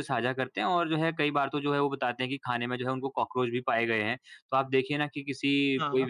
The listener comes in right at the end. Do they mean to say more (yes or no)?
no